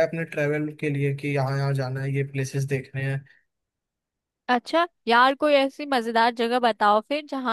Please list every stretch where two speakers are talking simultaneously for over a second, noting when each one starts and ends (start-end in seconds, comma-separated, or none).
none